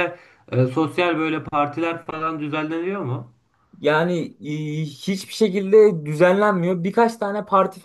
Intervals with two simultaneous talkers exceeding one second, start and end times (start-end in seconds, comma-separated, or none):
none